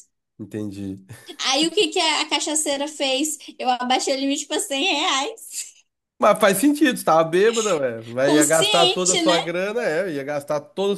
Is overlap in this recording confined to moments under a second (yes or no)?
no